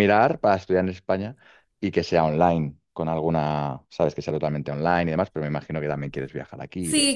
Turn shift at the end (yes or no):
yes